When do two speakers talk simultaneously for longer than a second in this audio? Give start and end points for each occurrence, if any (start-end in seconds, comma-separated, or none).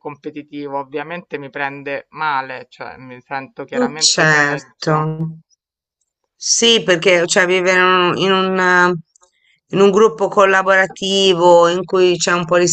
3.8-5.1